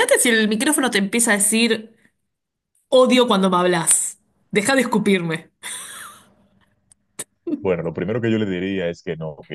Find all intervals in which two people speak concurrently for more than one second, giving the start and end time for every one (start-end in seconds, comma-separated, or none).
none